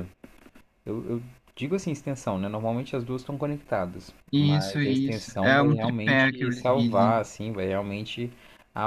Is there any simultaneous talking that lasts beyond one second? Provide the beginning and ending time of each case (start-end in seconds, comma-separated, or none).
4.3-7.2